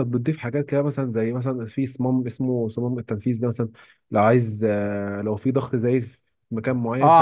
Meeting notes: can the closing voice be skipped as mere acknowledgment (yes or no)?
no